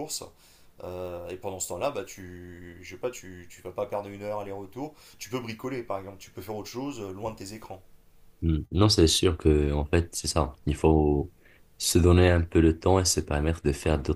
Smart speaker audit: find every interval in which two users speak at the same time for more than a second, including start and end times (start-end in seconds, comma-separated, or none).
none